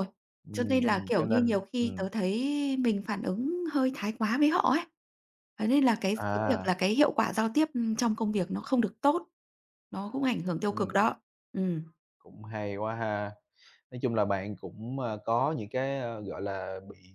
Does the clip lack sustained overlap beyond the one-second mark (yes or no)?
no